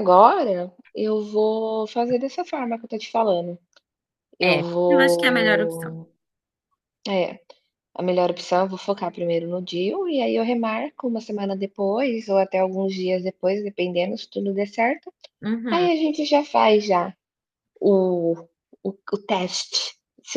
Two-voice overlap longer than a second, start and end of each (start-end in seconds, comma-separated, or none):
4.4-6.0